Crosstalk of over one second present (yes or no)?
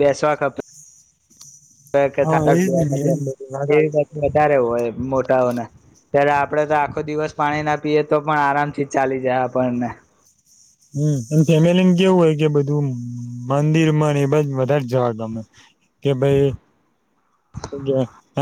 no